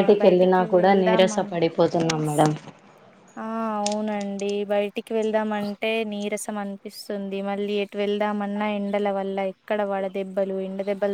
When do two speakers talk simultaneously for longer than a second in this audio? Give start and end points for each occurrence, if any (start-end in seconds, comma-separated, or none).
0.8-2.3